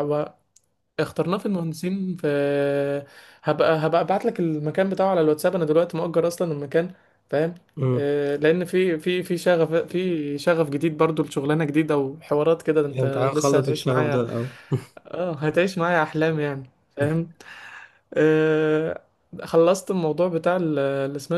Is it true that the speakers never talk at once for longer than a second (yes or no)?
no